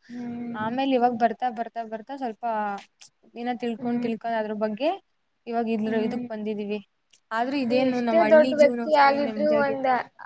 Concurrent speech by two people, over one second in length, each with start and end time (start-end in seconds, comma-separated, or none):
7.7-9.8